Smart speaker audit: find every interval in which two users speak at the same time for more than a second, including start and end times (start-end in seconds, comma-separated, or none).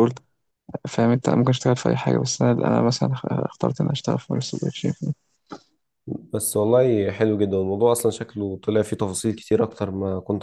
none